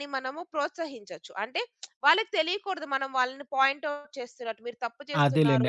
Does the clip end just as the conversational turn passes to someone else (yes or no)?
yes